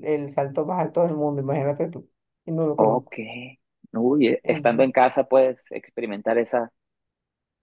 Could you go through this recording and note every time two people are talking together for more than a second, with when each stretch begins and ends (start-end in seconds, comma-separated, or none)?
none